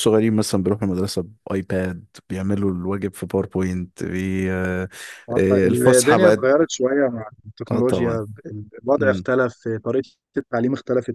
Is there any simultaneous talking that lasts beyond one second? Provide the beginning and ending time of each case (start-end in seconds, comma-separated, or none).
none